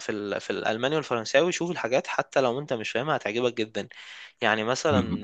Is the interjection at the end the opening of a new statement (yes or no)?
yes